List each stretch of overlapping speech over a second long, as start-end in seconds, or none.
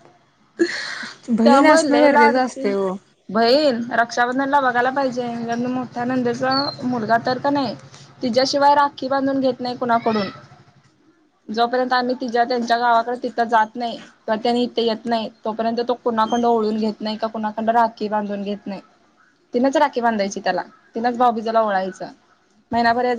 1.4-2.7